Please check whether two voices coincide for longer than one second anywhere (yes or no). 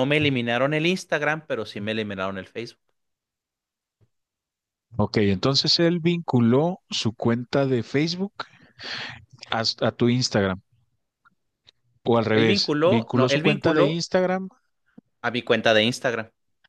yes